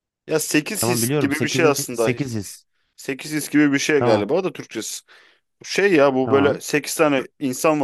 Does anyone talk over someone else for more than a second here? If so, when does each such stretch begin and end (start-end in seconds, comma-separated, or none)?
0.8-2.1